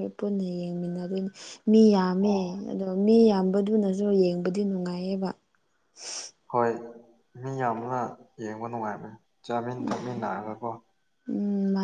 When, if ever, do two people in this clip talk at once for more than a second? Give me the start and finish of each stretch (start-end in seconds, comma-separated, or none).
none